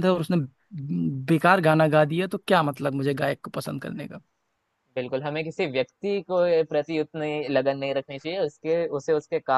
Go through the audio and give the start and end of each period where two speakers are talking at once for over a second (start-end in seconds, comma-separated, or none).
none